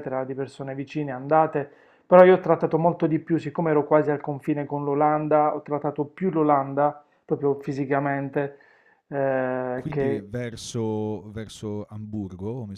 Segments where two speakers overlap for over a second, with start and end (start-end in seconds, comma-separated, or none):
none